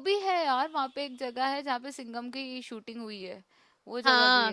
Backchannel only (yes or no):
no